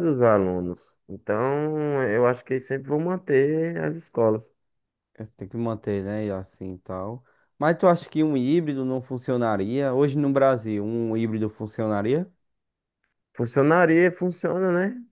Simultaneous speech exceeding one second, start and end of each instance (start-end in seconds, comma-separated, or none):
none